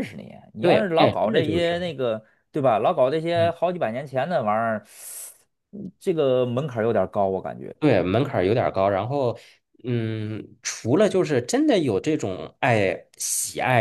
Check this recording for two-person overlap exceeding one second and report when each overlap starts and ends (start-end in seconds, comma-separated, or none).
0.6-1.8